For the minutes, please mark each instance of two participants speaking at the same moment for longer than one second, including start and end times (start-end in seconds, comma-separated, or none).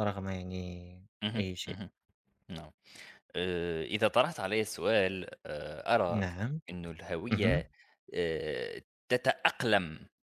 none